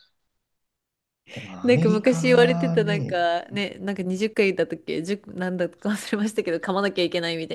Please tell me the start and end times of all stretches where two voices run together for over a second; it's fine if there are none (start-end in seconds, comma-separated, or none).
1.6-3.2